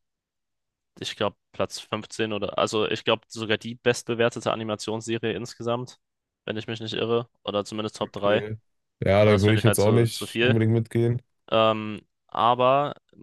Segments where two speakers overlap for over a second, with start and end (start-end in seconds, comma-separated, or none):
9.2-10.6